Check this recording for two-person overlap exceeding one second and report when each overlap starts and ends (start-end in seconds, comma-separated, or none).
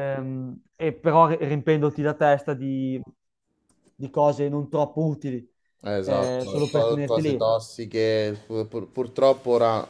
6.0-7.5